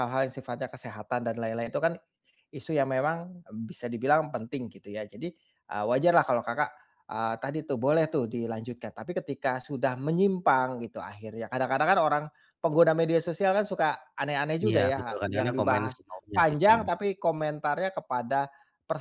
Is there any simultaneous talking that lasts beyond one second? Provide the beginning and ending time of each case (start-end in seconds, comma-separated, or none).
14.7-16.9